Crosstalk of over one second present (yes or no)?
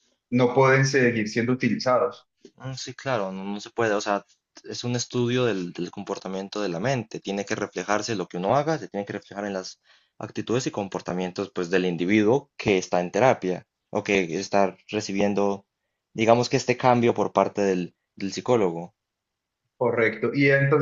no